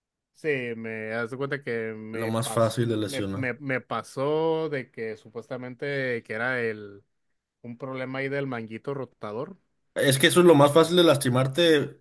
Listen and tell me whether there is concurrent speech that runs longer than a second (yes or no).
yes